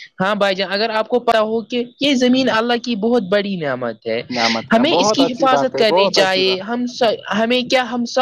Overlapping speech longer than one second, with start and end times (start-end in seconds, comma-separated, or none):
4.7-6.6